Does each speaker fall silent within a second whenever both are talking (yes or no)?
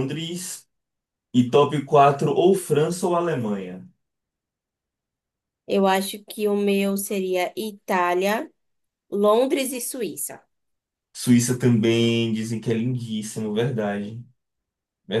yes